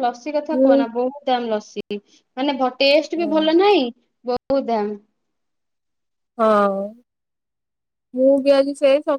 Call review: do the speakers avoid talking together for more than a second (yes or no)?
yes